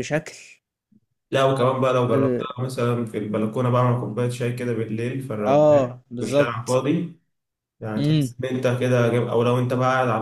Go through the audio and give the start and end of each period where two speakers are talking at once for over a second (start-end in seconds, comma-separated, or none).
5.5-6.8